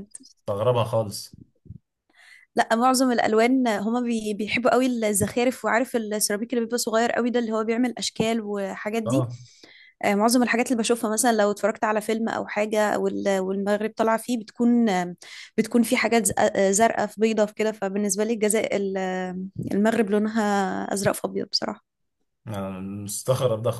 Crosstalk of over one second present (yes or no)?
no